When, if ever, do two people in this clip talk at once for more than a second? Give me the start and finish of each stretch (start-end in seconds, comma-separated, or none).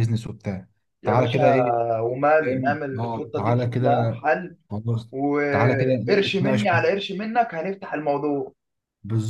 2.4-3.9, 5.5-7.0